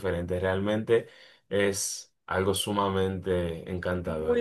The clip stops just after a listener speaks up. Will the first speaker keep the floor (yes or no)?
no